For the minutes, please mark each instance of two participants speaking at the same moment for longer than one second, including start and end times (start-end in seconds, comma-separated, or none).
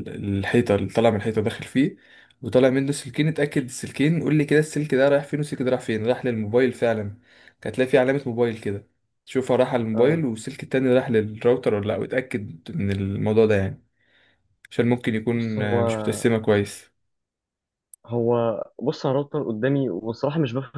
none